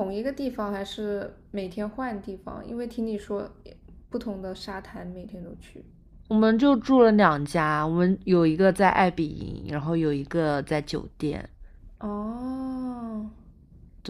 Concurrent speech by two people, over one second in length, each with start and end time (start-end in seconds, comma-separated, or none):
none